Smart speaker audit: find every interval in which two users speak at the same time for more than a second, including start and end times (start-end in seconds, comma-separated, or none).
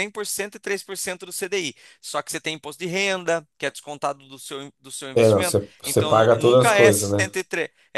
5.2-7.4